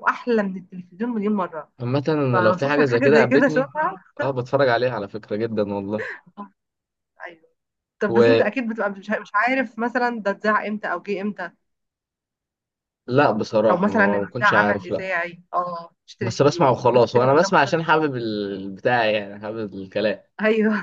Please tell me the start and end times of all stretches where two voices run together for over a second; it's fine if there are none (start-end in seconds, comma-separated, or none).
2.3-3.7, 13.7-15.1, 16.2-17.8